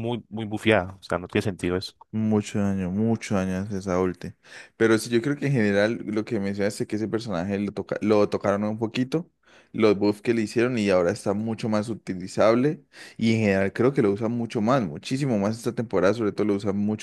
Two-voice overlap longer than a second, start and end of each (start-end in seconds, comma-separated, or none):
none